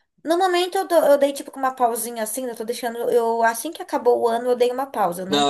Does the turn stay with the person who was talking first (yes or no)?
no